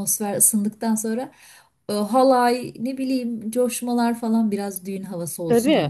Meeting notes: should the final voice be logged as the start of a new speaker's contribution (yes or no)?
yes